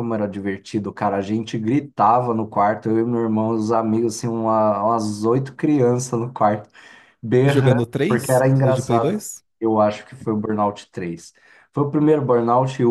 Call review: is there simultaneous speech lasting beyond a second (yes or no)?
yes